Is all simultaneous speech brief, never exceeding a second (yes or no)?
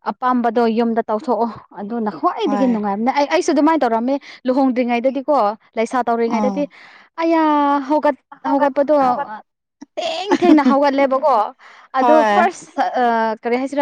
yes